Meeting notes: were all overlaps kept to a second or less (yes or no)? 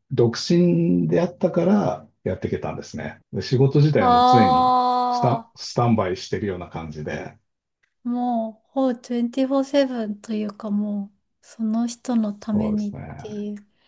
no